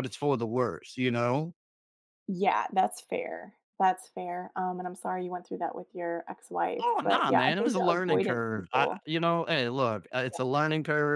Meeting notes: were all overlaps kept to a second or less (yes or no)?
no